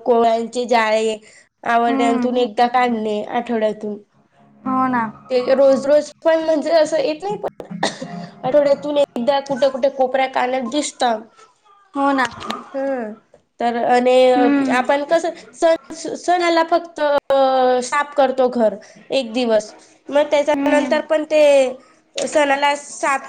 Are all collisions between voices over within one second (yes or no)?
yes